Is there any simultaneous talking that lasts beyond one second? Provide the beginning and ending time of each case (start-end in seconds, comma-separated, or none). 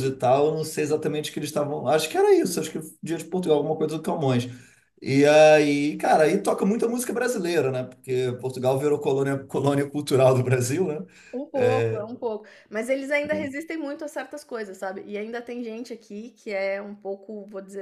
none